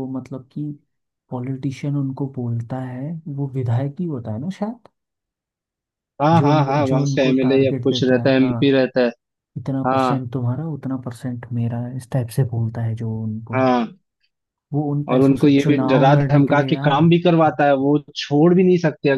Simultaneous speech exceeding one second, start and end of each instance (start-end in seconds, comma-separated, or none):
6.3-8.7, 15.1-17.1